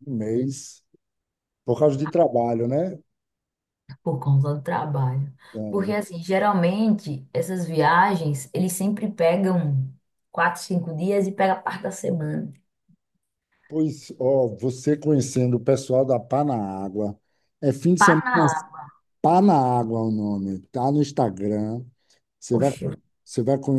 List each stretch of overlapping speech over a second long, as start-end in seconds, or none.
none